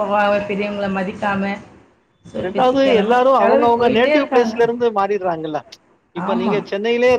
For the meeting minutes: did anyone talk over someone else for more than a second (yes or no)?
yes